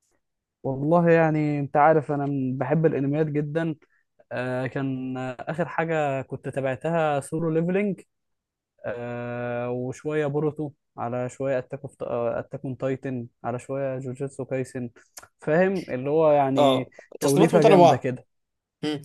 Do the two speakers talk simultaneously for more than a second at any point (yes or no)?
yes